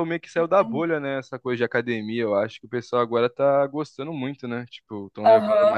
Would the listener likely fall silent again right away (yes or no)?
no